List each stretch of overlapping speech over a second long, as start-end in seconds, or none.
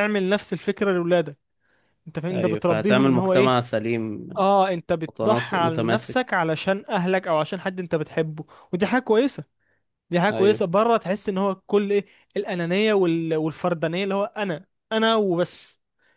2.3-3.6, 5.1-6.4